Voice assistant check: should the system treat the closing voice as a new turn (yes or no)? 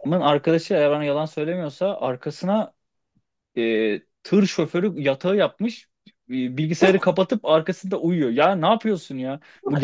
no